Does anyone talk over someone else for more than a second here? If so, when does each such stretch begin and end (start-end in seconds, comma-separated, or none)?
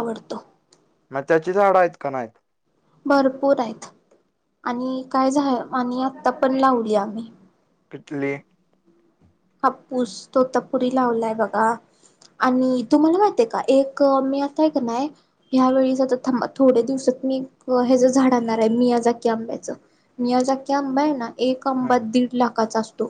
none